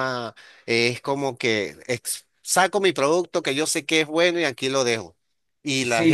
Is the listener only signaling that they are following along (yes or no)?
yes